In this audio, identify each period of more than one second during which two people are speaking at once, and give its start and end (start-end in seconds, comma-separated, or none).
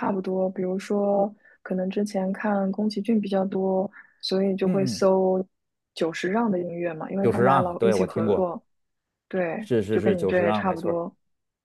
7.2-8.5, 9.6-11.0